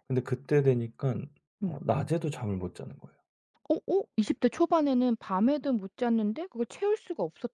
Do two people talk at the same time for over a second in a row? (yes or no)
no